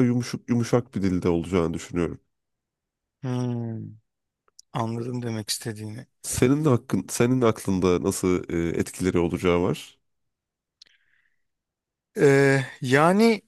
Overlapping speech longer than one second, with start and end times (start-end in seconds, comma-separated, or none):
none